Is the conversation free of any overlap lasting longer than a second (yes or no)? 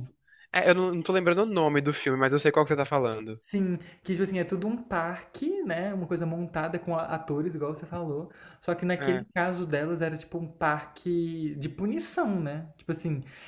yes